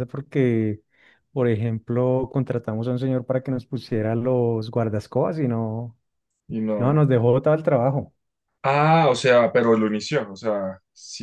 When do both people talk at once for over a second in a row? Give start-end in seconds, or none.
none